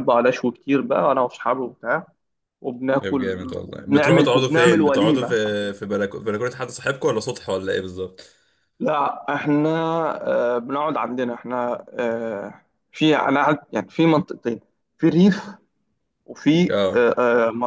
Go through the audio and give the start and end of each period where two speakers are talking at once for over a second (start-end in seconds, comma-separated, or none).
3.0-5.4